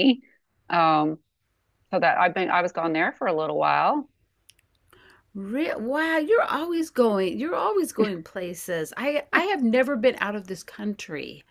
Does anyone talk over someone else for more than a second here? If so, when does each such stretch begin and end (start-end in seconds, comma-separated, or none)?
none